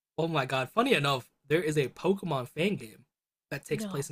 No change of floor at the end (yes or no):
yes